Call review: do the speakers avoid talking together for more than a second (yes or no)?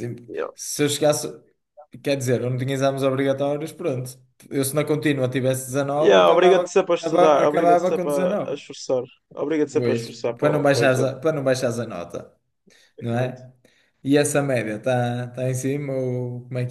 no